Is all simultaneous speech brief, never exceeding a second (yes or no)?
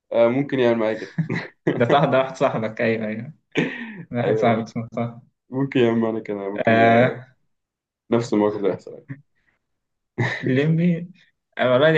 yes